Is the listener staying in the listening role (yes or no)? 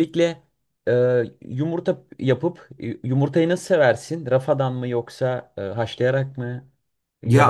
no